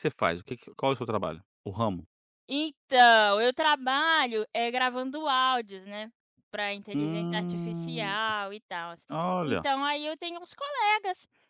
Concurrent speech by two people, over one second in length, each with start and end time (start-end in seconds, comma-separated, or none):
6.9-8.2